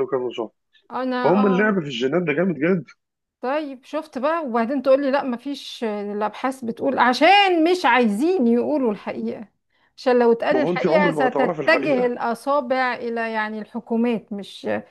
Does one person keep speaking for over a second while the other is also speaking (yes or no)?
yes